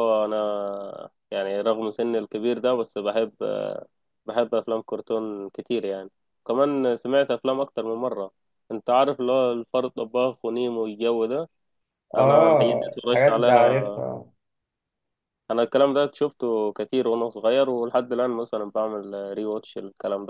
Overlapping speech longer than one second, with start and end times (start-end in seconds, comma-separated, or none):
12.2-13.9